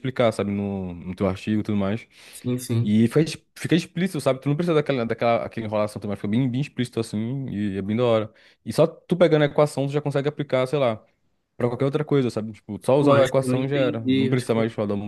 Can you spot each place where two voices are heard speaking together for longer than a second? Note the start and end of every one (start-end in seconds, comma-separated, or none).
13.0-14.3